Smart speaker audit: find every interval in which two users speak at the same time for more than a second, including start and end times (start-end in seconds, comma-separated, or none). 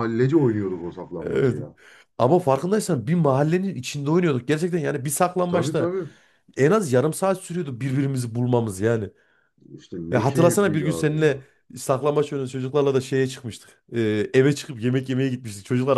10.1-11.4